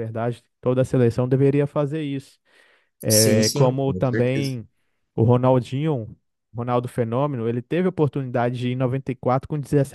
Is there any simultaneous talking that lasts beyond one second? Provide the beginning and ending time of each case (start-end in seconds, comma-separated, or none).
3.1-4.6